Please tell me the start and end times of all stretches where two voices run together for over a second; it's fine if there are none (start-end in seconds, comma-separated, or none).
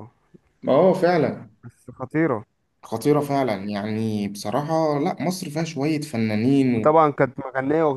none